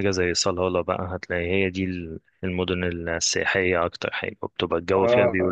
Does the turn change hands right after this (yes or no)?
yes